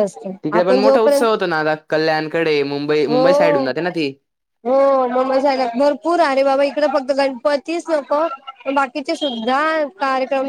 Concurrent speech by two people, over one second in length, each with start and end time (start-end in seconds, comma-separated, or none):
none